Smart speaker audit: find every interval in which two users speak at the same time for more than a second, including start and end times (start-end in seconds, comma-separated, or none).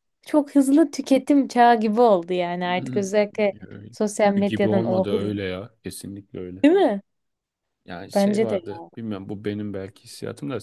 3.9-5.3